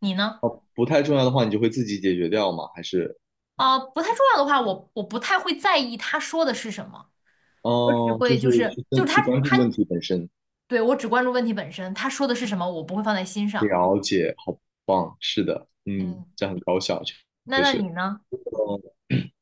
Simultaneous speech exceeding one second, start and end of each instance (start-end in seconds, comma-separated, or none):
7.8-9.7